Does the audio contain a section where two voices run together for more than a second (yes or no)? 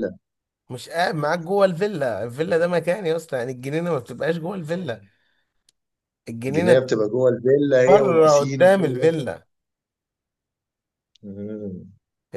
yes